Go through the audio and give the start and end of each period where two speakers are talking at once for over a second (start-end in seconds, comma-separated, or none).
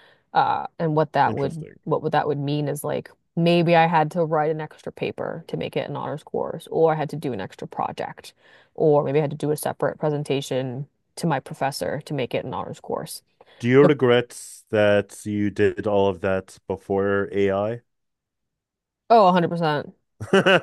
none